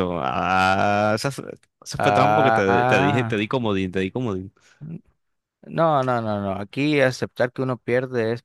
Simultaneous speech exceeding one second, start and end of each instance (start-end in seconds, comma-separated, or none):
2.0-3.5